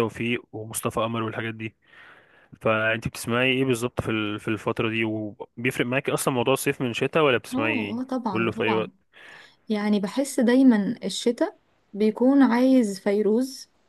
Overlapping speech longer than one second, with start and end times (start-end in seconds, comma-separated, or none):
7.5-8.9